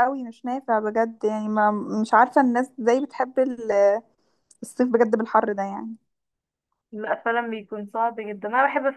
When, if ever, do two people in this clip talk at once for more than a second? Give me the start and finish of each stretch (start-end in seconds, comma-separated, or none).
none